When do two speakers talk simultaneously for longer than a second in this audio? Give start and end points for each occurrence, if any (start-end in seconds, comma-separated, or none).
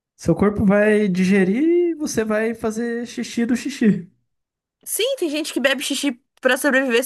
none